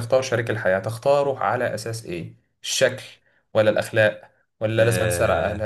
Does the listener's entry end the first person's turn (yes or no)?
no